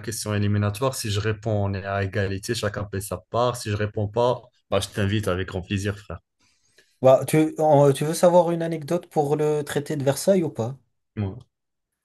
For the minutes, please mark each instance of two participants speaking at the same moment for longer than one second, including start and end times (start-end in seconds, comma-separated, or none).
none